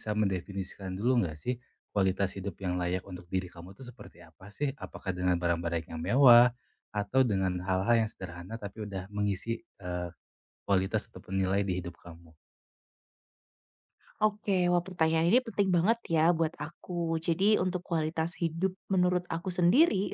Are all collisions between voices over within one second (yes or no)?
yes